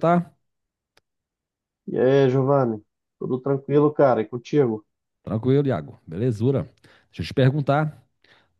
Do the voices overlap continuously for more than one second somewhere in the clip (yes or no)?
no